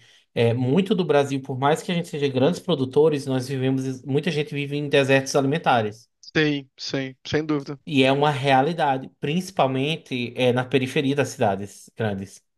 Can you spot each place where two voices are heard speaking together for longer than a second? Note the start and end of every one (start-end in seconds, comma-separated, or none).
none